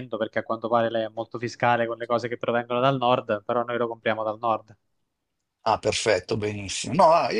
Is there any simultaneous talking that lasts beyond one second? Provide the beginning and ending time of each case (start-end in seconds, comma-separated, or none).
none